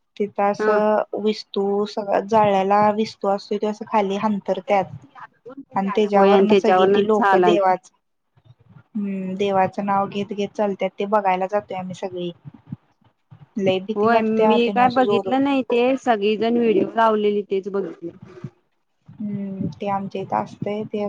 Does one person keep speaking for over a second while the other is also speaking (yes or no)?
yes